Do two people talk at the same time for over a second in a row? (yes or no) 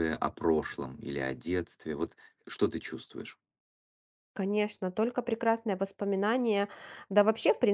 no